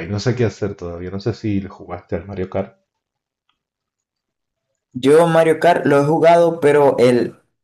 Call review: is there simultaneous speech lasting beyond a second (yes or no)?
no